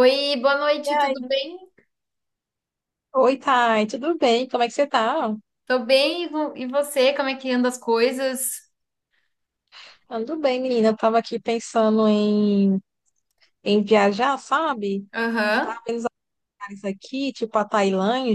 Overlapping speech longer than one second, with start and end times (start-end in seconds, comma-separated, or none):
none